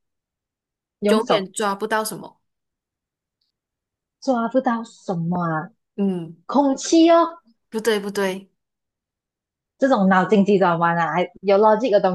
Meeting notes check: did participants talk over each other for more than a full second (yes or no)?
no